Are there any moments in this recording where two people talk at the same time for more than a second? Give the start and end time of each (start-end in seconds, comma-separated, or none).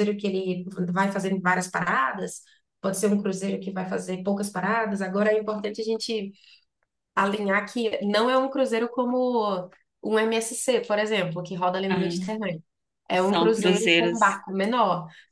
13.1-14.4